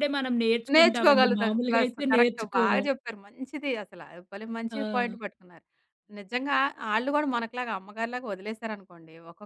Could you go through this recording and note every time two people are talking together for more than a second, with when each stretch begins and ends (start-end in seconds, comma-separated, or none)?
0.7-2.8